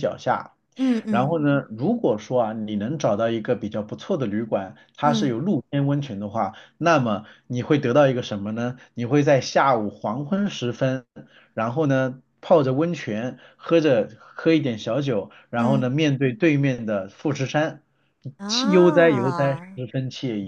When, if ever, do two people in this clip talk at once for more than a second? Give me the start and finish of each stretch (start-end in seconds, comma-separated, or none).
18.5-19.8